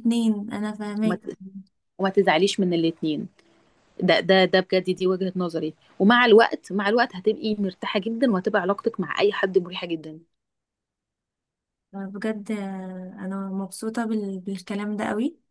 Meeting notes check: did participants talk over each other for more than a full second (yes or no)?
no